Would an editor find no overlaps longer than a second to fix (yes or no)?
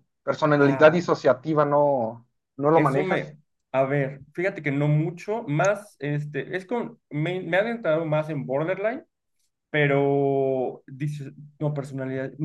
yes